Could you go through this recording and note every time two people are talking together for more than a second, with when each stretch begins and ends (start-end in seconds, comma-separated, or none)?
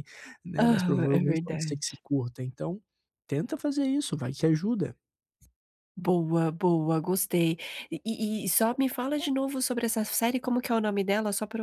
0.6-2.0